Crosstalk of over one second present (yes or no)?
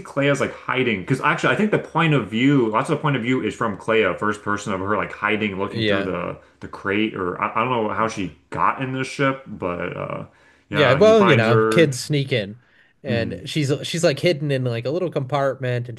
yes